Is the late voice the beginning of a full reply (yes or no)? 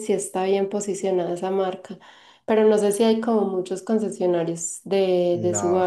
yes